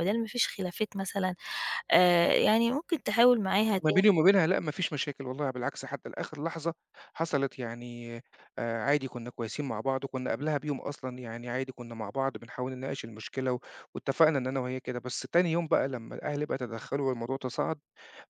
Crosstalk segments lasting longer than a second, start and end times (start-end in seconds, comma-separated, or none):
none